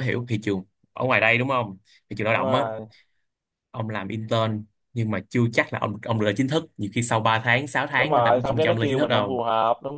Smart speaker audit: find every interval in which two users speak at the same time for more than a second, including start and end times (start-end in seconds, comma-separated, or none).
7.9-9.4